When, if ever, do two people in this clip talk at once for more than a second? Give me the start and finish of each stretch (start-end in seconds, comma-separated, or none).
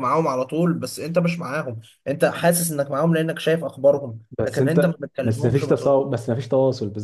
4.4-6.0